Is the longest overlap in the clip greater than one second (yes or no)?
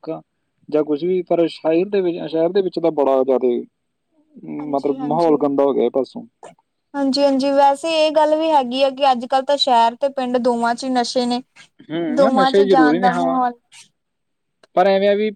yes